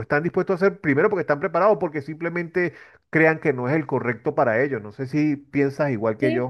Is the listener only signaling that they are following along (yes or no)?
no